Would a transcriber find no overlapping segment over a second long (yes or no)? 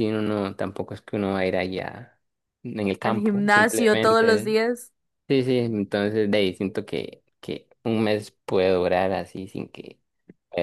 no